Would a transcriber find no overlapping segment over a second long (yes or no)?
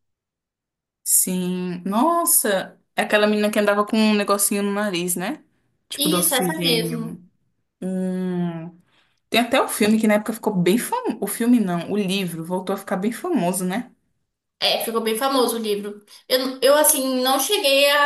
no